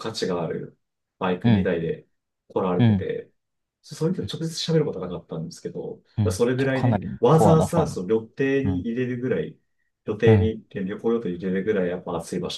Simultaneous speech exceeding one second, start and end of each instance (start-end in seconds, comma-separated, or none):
6.2-8.0